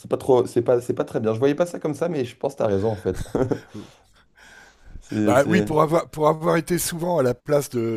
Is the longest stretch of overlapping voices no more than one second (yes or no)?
yes